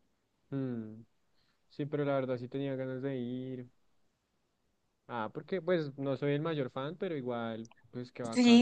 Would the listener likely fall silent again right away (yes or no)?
no